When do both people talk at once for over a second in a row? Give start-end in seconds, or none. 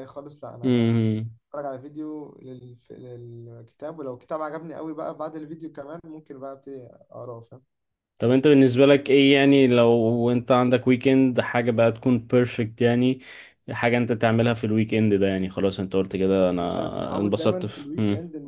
16.6-17.9